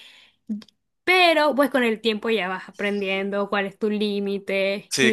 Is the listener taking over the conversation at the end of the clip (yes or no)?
no